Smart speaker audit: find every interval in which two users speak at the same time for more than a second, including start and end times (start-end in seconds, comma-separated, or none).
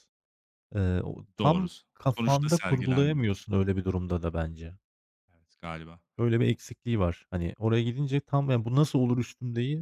1.4-3.3